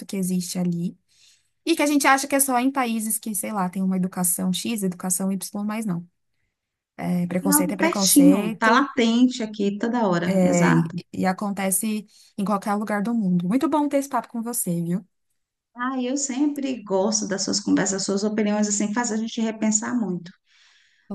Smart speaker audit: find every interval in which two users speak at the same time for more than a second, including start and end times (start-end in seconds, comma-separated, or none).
7.4-8.9